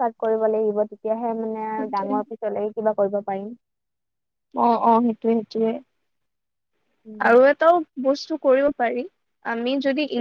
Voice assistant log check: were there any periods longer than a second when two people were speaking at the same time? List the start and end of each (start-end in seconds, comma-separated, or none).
none